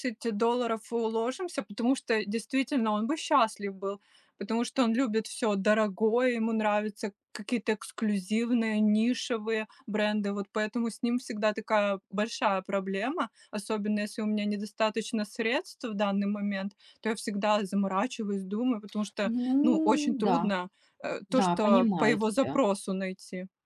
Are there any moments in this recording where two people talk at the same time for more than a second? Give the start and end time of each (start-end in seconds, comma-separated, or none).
19.2-20.5, 21.3-22.6